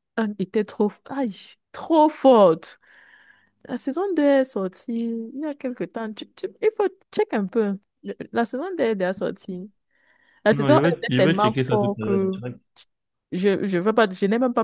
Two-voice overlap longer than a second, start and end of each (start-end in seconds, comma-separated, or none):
10.5-12.2